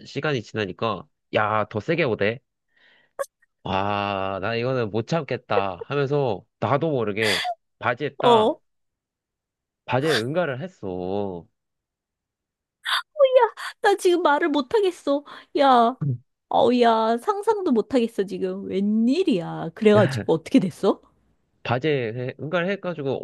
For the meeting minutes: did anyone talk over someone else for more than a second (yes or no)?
no